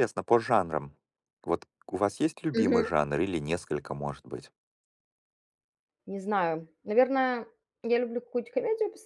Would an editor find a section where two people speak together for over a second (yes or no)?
no